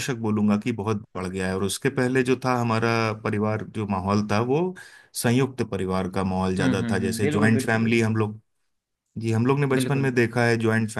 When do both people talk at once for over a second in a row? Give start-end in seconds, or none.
6.6-8.0